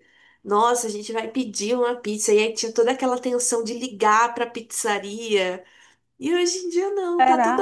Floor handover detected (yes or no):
no